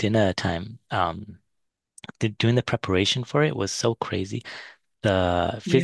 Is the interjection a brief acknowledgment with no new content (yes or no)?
yes